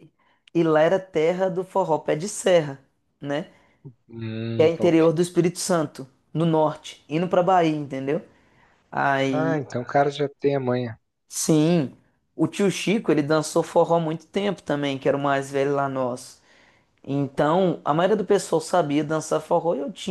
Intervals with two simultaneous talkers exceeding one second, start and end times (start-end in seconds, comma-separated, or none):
none